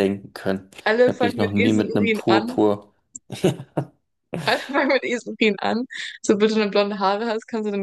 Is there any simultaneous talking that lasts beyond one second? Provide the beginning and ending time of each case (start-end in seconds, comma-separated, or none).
0.8-2.6